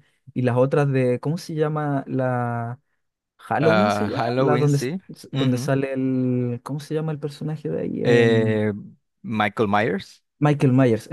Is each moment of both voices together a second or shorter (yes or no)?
no